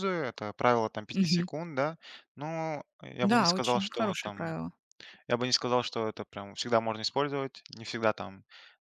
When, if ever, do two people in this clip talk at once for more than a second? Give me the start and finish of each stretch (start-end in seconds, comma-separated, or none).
3.2-4.5